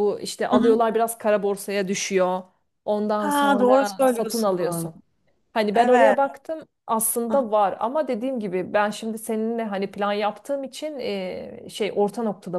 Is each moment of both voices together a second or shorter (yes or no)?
no